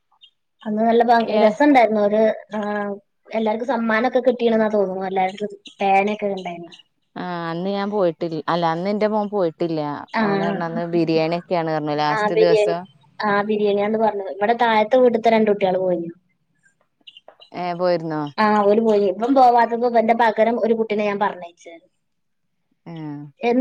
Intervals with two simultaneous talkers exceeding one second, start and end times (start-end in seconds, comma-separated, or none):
none